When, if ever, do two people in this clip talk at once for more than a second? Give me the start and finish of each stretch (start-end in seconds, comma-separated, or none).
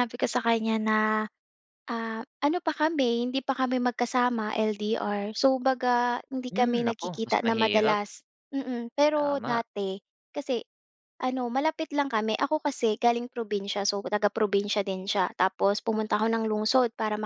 6.5-8.0